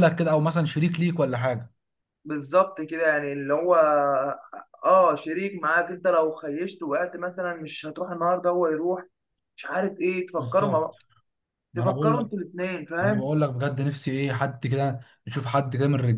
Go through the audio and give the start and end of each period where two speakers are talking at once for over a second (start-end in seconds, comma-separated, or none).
none